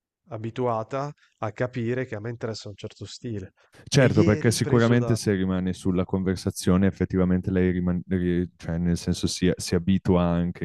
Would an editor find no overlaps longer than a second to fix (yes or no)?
no